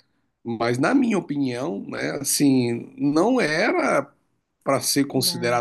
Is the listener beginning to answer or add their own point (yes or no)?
no